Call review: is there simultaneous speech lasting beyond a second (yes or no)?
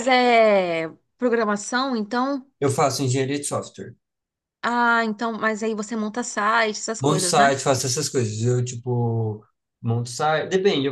no